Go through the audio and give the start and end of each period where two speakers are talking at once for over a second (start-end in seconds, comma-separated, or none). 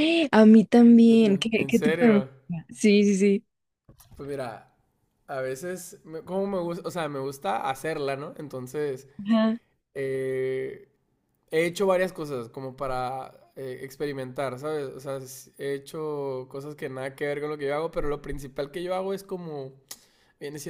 0.9-2.3